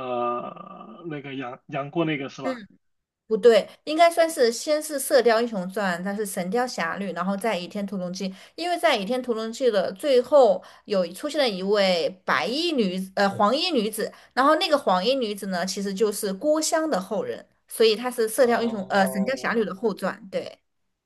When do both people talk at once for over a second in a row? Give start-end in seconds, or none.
18.4-19.6